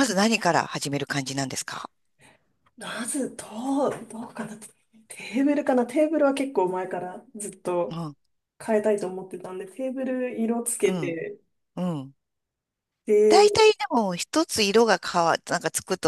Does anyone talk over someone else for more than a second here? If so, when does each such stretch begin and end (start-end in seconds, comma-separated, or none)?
none